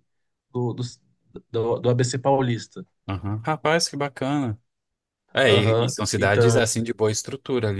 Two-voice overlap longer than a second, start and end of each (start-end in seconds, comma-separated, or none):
5.5-6.7